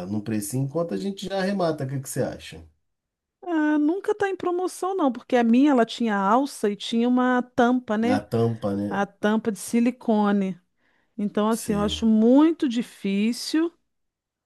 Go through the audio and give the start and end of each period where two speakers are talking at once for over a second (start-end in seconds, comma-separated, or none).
none